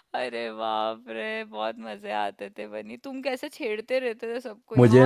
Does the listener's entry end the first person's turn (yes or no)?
yes